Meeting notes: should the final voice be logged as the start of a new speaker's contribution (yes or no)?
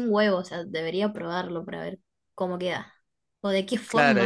yes